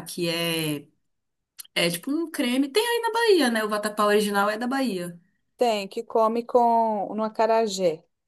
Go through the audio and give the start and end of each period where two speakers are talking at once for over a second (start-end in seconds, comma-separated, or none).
none